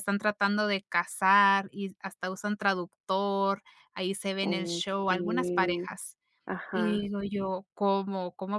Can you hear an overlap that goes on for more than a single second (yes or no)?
yes